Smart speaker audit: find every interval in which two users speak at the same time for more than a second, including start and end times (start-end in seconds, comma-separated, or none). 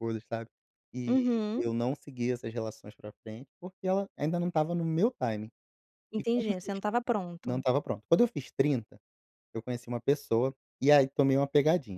none